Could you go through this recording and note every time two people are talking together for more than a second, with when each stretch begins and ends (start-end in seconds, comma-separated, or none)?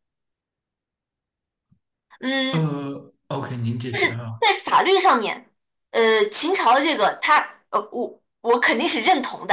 none